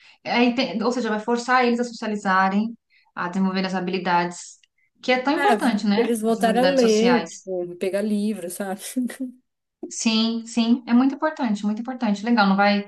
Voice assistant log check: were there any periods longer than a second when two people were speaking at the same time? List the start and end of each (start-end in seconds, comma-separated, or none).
5.3-7.5